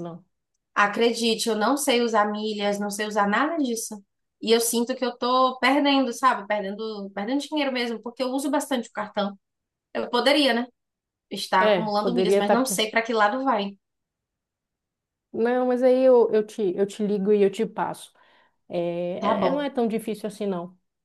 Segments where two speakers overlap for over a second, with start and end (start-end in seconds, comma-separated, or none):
11.6-12.8